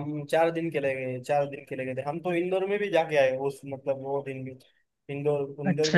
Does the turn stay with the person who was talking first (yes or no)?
no